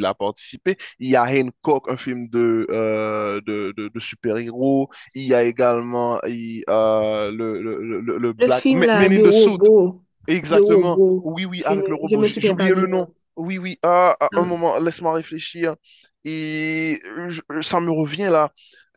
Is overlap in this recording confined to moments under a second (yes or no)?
no